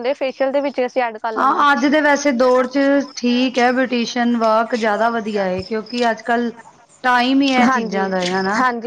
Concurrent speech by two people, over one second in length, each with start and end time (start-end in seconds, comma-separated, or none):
none